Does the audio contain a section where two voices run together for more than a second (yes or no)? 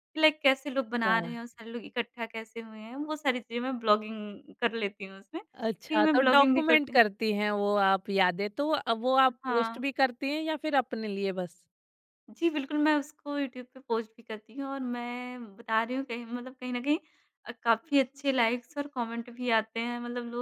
yes